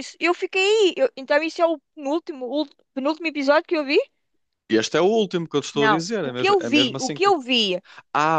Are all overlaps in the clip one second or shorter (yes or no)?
no